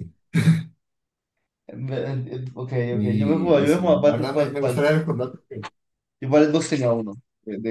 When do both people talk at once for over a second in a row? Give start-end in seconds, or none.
2.9-4.8